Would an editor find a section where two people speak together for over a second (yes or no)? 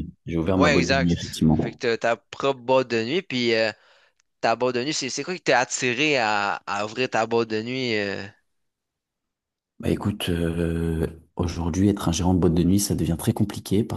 yes